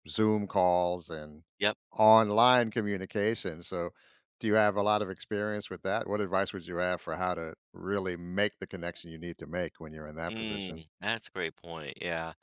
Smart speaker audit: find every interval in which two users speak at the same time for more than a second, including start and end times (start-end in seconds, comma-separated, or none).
none